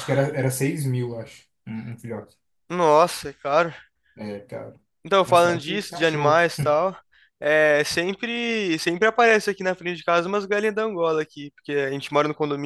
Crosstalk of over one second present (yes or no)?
yes